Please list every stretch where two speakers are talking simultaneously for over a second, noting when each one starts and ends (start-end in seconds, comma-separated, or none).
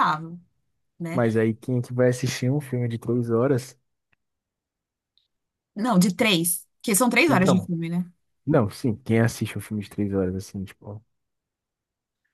none